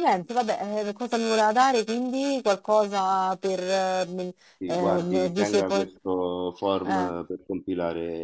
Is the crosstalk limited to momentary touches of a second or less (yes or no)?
no